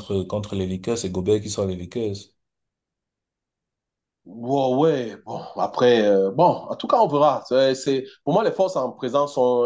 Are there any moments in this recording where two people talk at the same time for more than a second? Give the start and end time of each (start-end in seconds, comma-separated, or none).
none